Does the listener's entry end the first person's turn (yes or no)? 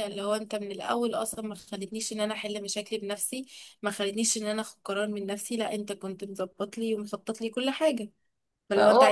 yes